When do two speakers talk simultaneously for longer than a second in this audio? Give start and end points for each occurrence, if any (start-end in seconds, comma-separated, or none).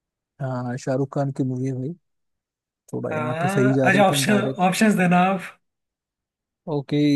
3.1-4.8